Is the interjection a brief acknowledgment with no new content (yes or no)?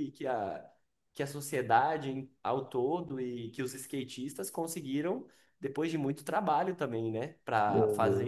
yes